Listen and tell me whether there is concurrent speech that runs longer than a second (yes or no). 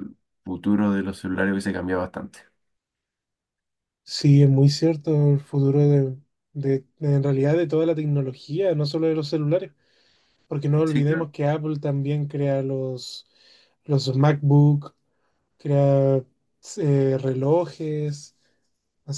no